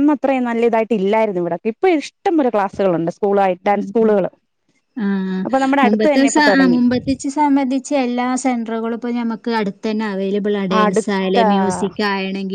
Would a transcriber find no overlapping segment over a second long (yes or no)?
yes